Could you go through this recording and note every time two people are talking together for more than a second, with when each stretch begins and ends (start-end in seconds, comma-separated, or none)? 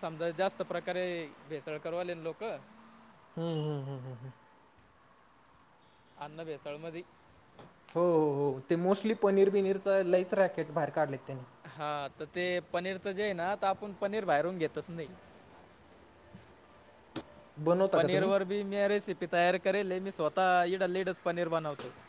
none